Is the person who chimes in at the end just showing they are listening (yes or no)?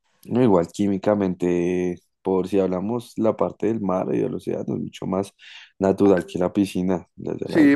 no